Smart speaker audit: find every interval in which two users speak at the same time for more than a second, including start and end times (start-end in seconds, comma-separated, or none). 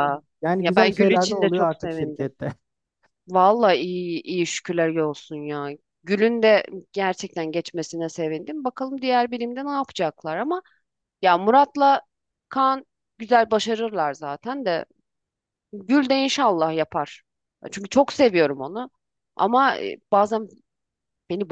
0.6-2.3